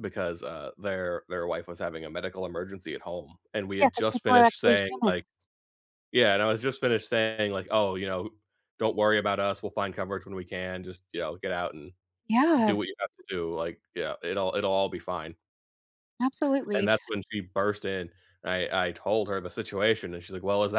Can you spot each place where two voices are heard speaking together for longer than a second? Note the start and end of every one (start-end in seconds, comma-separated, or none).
3.8-5.2